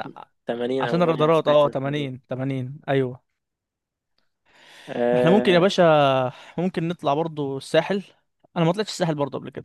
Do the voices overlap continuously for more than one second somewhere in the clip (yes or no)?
yes